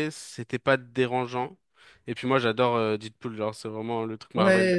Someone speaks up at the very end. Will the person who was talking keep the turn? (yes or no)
no